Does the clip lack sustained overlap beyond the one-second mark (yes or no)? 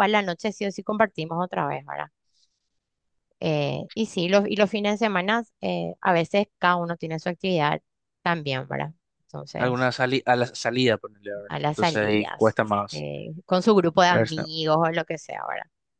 no